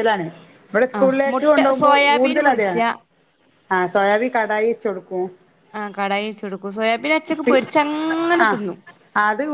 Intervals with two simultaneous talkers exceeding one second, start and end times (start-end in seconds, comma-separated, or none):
1.0-2.8